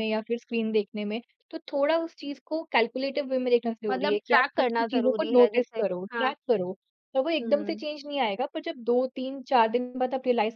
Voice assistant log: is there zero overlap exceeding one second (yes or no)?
no